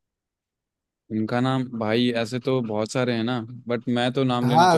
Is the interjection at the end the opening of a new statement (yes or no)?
yes